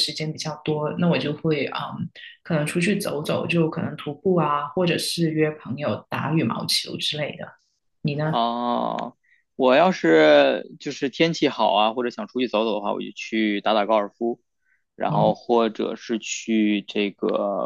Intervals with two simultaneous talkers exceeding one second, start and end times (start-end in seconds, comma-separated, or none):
none